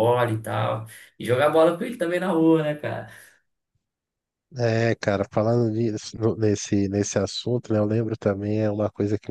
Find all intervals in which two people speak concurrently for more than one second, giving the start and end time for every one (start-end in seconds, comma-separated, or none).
none